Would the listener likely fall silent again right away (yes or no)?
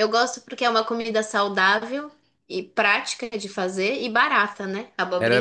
no